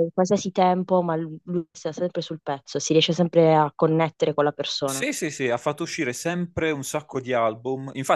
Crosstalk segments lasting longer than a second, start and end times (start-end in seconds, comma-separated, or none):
none